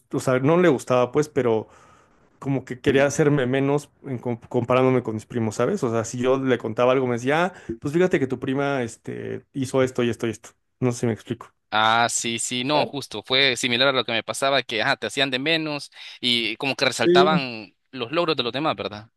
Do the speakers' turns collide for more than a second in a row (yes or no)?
no